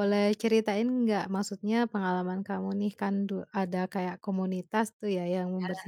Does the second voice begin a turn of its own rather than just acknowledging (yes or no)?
no